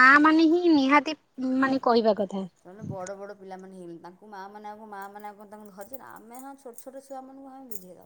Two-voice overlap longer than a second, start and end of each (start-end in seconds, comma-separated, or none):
none